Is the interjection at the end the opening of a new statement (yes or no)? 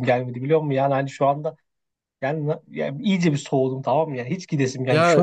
yes